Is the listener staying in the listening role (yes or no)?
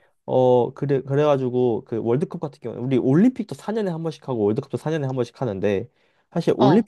yes